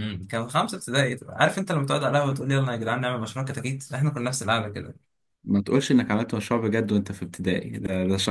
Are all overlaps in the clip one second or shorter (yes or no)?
yes